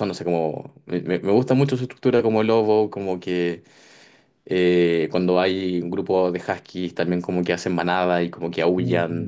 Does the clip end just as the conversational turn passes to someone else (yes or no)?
no